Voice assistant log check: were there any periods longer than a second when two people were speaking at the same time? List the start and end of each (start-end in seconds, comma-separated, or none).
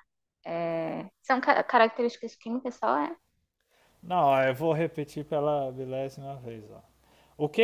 none